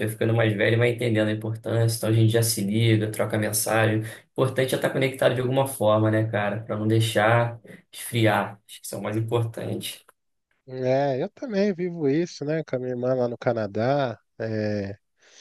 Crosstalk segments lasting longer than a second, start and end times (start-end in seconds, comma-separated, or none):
none